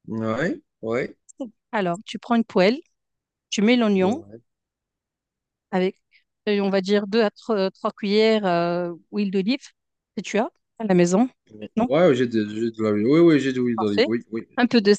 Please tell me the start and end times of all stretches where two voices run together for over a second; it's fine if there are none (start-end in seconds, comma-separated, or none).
none